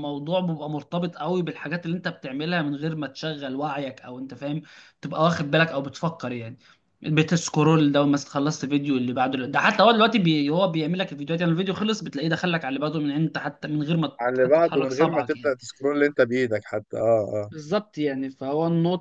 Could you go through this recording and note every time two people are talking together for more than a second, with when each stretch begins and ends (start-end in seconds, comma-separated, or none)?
14.2-15.5